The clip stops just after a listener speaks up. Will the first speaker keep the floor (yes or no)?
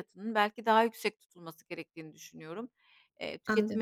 yes